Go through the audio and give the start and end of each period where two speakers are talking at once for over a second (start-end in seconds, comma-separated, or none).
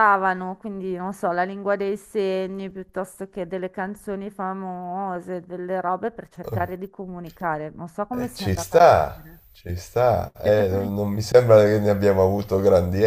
8.1-9.4